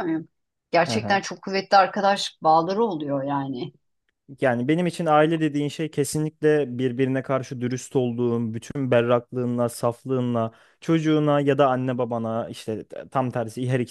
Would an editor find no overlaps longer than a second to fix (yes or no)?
yes